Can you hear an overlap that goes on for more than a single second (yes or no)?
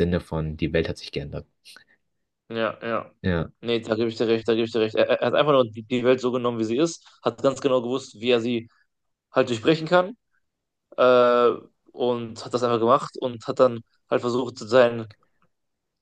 no